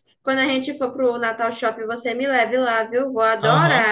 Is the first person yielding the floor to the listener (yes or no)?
yes